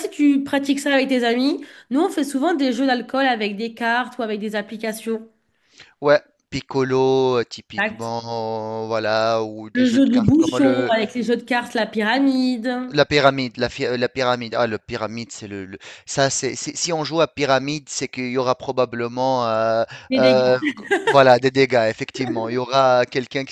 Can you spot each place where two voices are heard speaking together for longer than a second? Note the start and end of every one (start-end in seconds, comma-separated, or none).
9.7-10.9